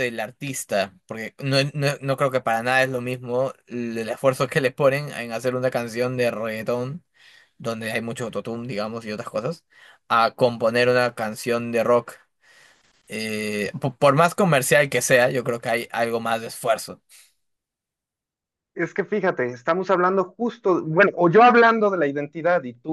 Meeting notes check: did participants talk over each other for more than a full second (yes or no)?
no